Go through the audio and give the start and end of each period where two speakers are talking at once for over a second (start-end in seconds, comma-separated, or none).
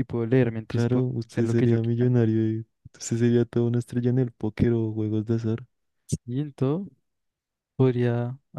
0.7-2.1